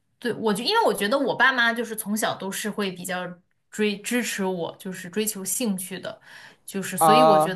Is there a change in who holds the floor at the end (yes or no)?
no